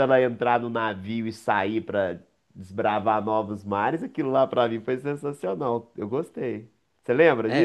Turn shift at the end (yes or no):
yes